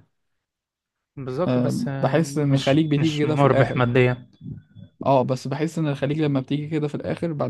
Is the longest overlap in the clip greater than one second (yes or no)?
yes